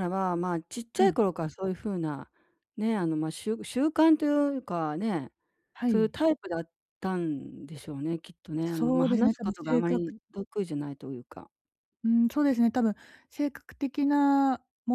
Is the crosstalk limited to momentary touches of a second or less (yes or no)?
no